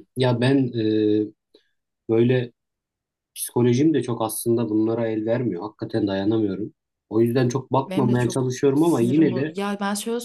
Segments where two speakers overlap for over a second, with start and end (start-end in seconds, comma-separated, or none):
7.9-9.6